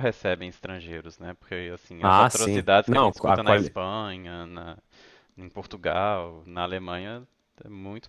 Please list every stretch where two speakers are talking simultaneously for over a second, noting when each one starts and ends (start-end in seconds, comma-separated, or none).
2.0-3.8